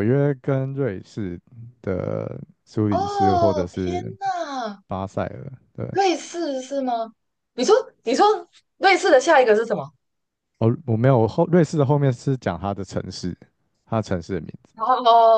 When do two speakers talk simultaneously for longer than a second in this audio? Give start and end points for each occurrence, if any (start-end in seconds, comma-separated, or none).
2.9-4.1